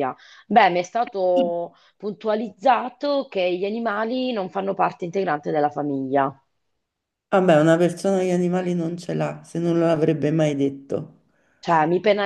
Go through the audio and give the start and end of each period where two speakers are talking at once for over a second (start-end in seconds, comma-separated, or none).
none